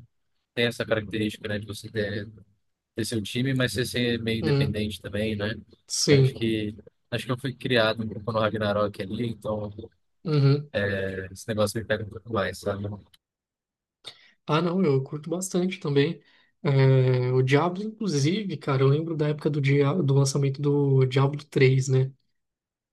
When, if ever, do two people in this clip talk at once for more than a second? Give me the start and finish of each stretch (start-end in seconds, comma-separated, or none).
none